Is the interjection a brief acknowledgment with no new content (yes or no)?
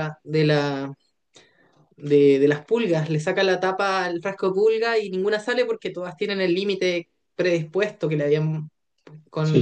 no